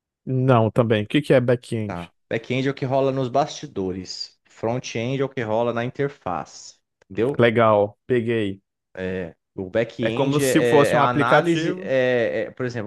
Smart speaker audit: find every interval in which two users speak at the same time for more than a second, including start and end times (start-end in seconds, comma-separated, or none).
10.0-11.9